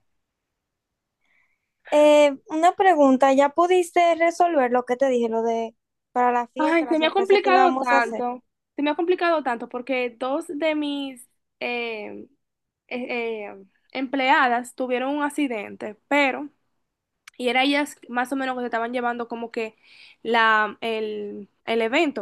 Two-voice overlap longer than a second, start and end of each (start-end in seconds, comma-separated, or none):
6.6-8.2